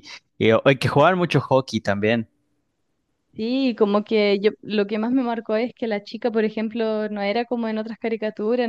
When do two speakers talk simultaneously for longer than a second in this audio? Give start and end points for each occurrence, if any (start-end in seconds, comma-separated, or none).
none